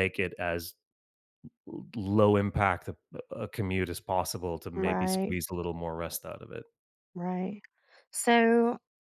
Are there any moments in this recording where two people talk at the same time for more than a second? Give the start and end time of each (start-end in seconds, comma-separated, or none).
none